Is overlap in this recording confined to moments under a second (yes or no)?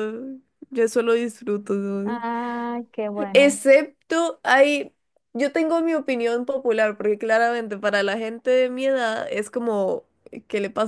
yes